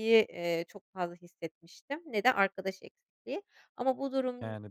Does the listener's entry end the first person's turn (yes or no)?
no